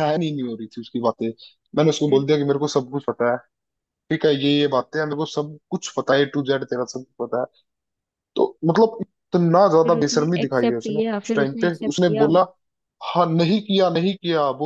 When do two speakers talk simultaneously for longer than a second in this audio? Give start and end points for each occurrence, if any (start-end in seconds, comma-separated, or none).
9.8-12.3